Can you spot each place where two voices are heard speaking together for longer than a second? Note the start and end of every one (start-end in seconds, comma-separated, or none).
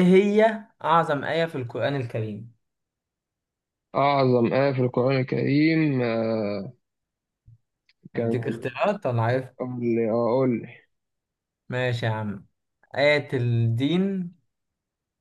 none